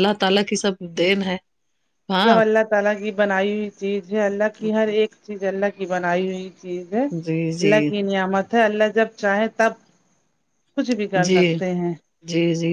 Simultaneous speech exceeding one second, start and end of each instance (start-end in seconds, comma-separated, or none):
none